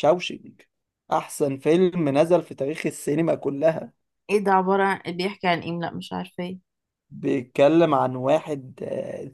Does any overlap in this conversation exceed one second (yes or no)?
no